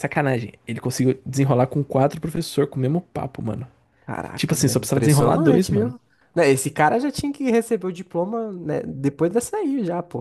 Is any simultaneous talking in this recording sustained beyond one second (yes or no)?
yes